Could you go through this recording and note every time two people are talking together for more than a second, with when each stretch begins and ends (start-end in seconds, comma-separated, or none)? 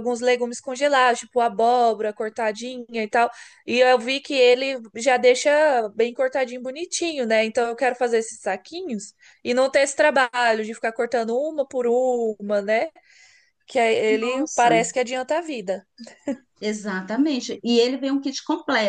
none